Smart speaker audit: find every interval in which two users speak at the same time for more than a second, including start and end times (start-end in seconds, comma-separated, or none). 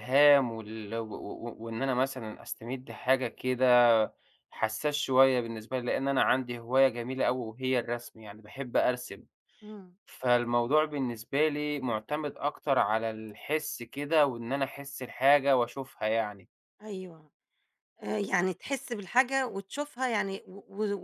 none